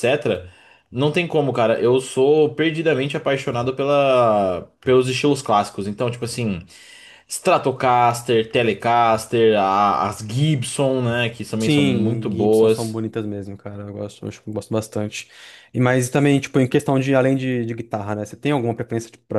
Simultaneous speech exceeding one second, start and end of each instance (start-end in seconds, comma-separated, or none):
11.6-13.0